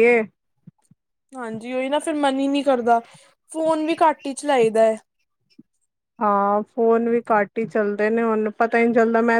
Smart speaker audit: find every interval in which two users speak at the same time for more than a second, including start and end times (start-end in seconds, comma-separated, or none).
none